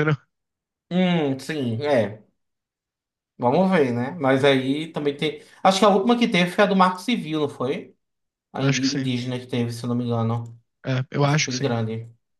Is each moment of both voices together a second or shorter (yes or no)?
yes